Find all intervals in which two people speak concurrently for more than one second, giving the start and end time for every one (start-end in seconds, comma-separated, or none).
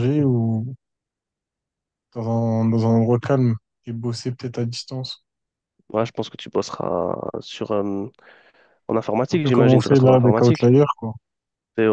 9.3-10.7